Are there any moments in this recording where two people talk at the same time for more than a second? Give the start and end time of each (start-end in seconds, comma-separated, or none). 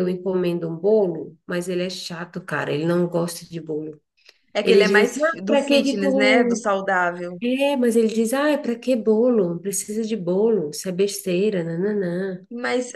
4.6-6.7